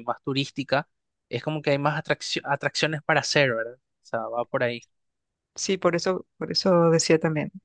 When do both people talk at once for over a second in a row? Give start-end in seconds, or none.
none